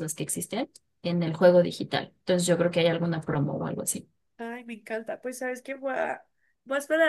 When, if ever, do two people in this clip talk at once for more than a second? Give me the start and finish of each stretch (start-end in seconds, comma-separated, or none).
none